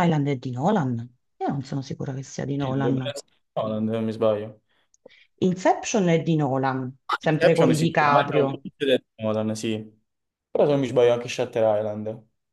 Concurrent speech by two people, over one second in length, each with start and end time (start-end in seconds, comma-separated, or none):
7.3-8.6